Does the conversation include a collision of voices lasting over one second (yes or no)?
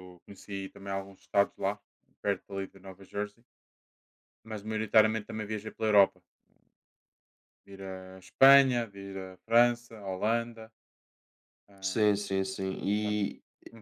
no